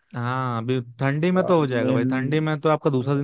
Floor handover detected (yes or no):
no